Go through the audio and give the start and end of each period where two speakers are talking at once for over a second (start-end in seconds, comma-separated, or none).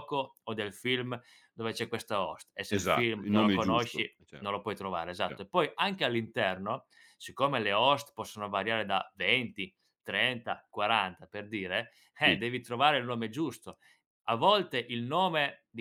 2.7-4.4